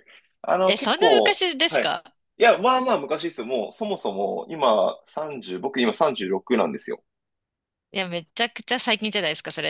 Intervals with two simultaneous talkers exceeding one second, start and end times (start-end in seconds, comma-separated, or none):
0.6-2.0